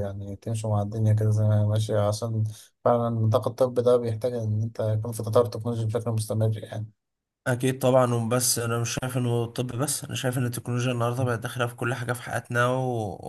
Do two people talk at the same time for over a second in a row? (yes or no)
no